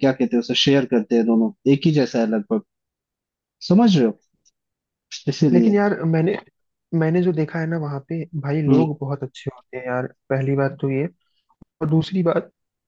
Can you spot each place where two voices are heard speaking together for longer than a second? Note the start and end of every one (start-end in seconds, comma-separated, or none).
none